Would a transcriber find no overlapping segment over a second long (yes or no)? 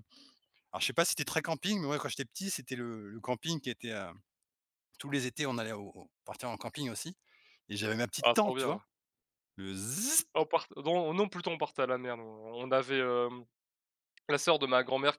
yes